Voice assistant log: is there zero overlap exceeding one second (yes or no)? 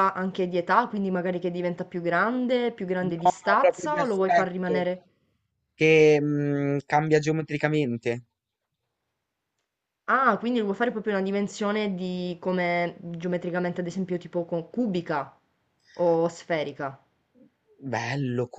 no